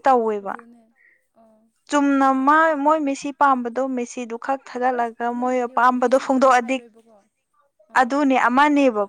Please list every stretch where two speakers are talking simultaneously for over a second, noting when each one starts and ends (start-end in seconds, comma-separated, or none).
5.0-6.8